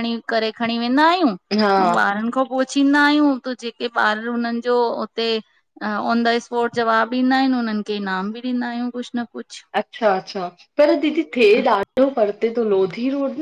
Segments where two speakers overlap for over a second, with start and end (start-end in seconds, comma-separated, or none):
none